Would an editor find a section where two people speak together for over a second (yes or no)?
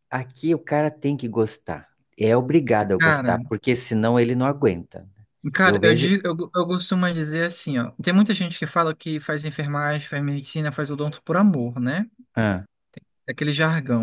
no